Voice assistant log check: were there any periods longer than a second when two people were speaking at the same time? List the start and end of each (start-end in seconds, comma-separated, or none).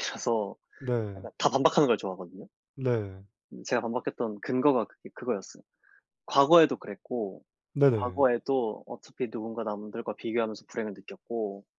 none